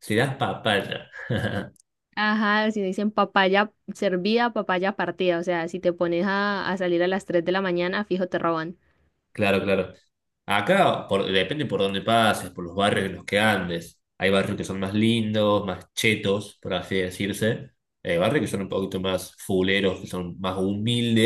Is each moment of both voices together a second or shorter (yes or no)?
yes